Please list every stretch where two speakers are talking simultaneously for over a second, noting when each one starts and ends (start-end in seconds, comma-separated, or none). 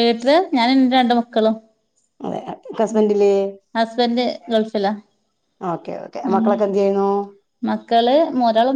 none